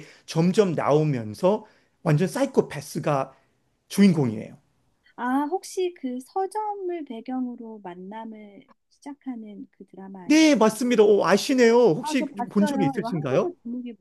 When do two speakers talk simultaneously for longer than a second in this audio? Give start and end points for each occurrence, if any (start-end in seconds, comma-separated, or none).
12.0-13.5